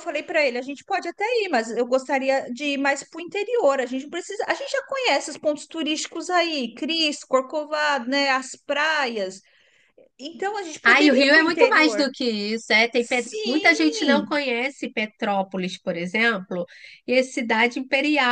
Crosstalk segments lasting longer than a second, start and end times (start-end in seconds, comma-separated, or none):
10.8-12.1, 12.9-14.3